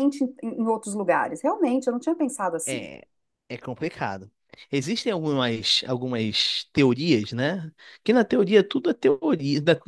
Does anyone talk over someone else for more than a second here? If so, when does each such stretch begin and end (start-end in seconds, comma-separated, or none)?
none